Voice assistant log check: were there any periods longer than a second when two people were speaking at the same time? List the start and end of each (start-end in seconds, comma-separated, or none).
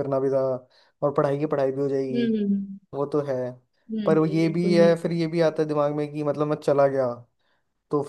4.0-5.6